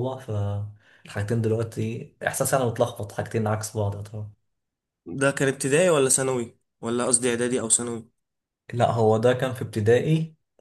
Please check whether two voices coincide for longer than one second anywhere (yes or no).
no